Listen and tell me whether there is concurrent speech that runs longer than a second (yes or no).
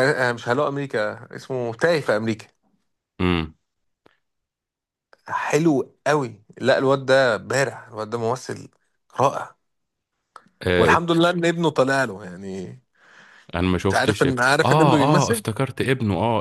yes